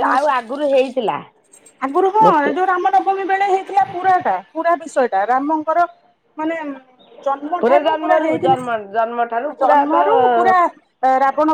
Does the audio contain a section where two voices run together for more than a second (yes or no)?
yes